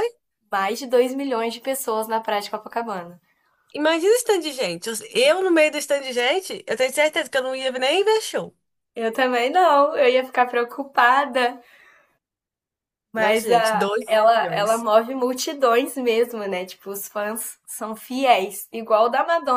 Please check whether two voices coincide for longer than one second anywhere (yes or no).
yes